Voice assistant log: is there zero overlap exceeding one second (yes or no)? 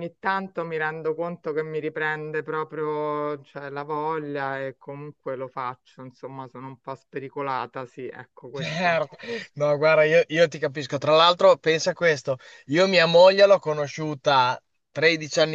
yes